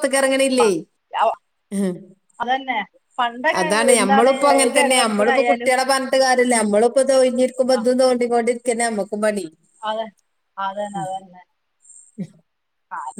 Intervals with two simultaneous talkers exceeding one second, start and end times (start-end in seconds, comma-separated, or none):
4.0-5.7